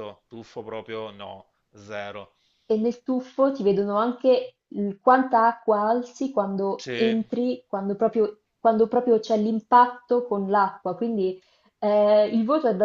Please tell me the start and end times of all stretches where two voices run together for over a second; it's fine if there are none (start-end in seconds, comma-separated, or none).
none